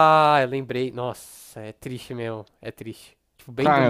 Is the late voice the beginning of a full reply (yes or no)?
yes